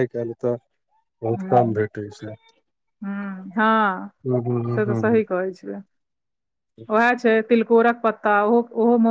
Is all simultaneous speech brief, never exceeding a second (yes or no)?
yes